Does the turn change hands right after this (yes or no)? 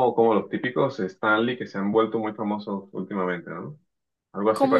yes